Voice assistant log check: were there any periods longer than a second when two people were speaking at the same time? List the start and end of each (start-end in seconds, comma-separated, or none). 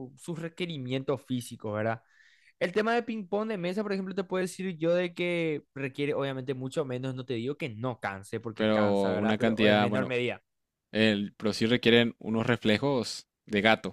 8.5-10.1